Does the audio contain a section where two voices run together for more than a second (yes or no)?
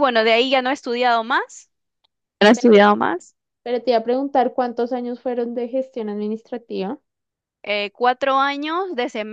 no